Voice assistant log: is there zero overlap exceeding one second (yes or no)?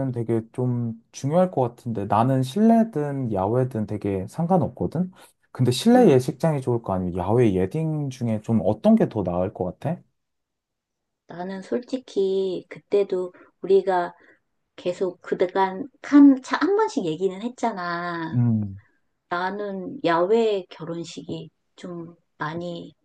yes